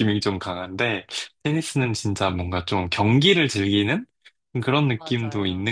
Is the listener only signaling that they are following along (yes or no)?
yes